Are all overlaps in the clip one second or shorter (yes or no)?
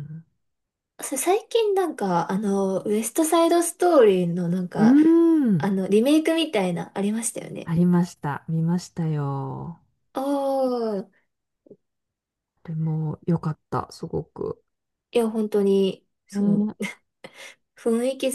yes